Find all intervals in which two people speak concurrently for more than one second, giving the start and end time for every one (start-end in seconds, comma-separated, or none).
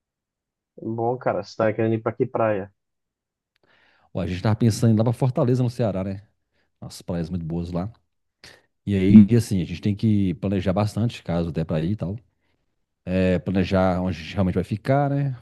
none